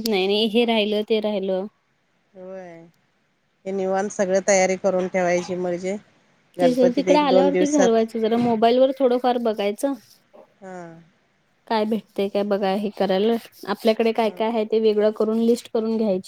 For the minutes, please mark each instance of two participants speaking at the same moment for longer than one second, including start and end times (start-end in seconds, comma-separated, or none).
6.6-8.0